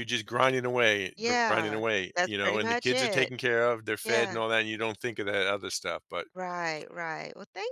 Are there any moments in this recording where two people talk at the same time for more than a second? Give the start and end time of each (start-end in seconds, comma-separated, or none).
1.2-3.3